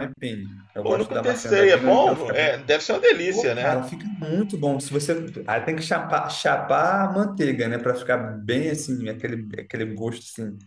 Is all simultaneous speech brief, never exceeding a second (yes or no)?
no